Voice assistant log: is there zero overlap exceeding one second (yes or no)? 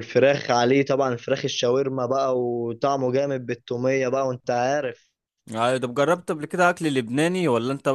yes